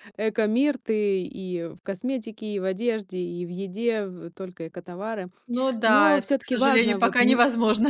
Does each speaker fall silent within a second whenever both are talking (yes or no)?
no